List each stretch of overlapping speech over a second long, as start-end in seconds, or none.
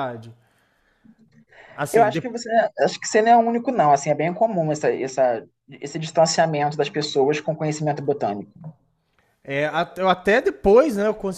none